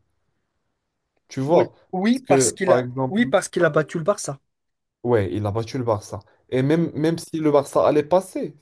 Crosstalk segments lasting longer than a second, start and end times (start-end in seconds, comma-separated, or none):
1.5-3.2